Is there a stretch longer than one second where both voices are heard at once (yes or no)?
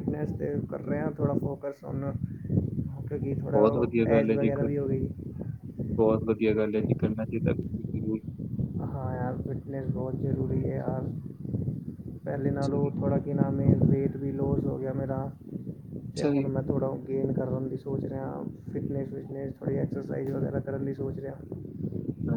no